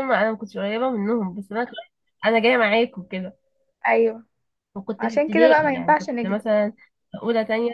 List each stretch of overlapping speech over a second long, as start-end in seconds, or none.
5.0-6.5